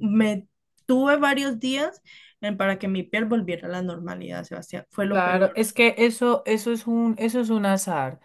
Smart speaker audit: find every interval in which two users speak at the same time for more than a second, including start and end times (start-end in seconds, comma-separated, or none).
none